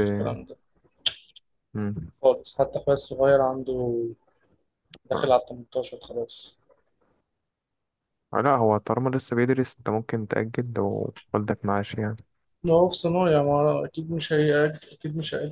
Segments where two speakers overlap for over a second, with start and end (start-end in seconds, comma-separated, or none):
none